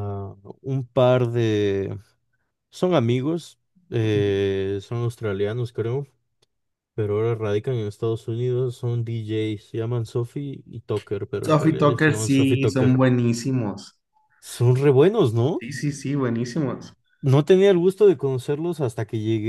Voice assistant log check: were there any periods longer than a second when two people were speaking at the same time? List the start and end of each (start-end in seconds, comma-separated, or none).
11.5-13.0